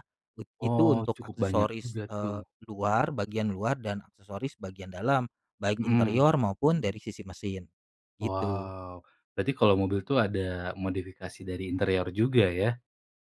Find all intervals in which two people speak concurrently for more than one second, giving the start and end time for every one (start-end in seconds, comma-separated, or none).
0.6-2.4